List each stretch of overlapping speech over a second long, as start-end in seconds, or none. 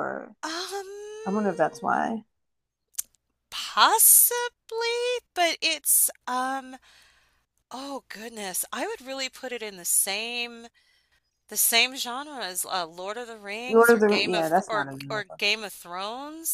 13.7-15.4